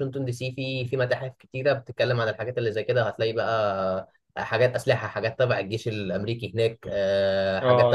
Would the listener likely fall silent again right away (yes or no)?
no